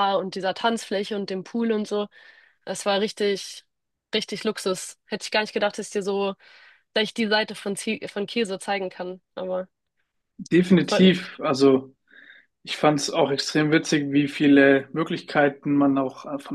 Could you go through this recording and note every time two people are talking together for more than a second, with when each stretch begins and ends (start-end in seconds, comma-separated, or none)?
none